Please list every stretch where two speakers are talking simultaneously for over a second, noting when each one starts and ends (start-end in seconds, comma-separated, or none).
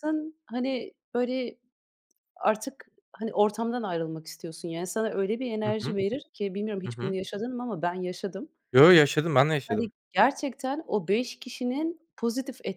none